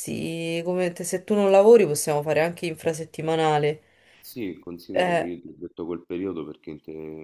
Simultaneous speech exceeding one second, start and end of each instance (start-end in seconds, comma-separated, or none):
none